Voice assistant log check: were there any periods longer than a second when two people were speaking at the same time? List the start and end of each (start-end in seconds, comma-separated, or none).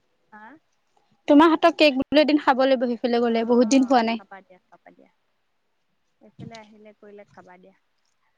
none